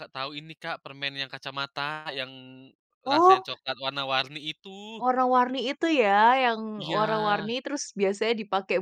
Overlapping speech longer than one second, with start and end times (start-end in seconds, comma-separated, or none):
none